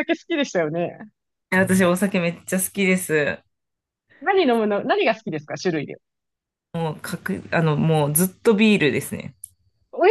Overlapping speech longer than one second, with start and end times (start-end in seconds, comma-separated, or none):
none